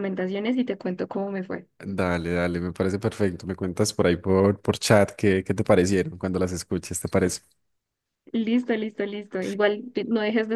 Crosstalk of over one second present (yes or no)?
no